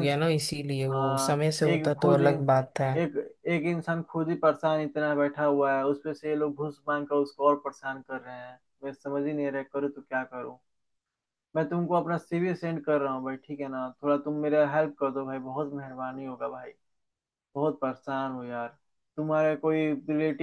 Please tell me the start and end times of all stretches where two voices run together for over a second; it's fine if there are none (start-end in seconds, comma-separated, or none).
0.9-2.9